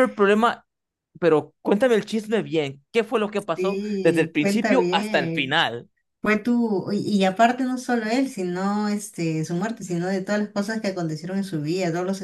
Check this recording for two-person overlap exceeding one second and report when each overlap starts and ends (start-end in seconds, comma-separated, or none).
3.5-5.6